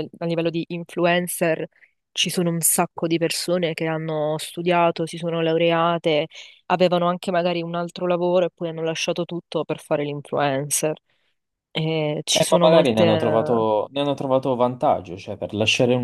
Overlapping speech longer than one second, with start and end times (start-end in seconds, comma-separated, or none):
12.3-13.7